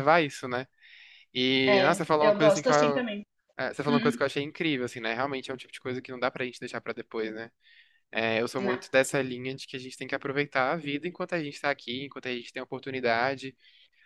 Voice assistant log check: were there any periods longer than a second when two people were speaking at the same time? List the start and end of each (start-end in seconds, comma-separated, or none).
1.6-3.0